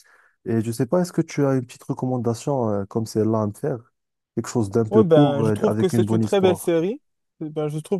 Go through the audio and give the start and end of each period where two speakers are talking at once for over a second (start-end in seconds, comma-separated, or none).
4.9-6.7